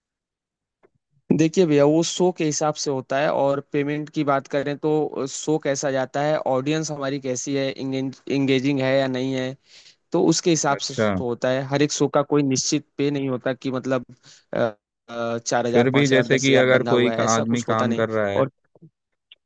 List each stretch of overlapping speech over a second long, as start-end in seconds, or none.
15.7-18.4